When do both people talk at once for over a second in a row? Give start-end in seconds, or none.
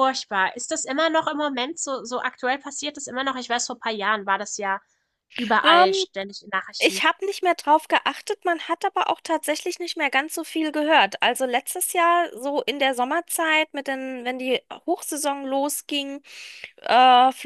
none